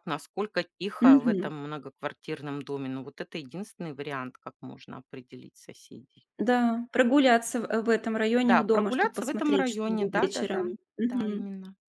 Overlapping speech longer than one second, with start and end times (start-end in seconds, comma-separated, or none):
8.4-10.8